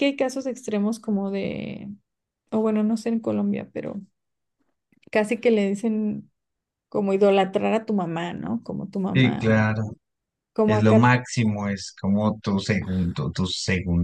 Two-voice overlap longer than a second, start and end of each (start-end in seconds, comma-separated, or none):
none